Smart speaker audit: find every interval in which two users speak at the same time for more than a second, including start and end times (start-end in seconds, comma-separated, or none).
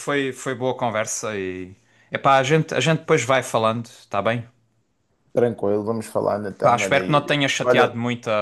6.6-7.9